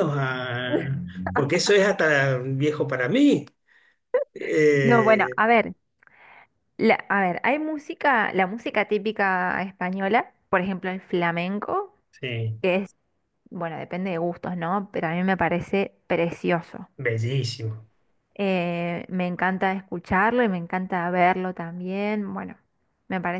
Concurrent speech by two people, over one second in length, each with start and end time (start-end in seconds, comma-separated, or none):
none